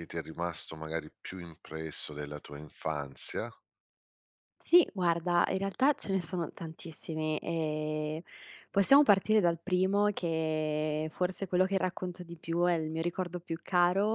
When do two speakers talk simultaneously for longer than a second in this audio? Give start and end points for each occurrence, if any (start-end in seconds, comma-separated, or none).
none